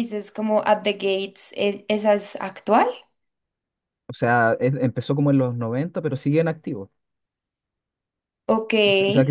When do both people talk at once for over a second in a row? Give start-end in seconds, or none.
none